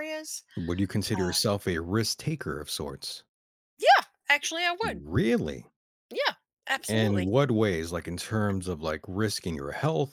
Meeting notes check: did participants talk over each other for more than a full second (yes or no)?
no